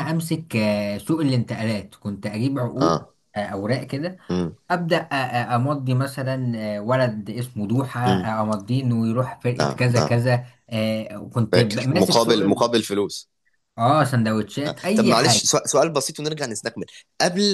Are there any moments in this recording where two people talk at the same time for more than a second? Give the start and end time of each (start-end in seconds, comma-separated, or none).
11.5-12.7